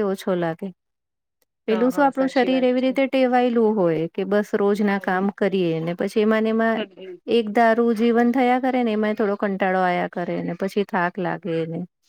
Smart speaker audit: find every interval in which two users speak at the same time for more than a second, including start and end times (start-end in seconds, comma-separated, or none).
1.7-3.0